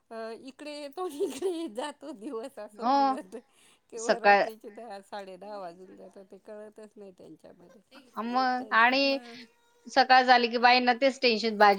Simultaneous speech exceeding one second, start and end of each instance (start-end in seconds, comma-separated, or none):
none